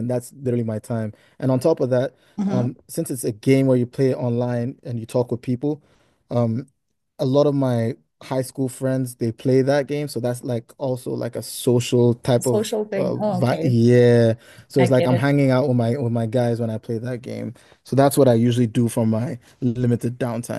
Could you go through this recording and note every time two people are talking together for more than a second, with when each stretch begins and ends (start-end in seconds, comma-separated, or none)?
12.4-13.8